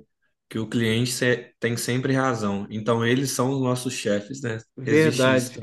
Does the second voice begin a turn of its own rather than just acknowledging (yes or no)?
yes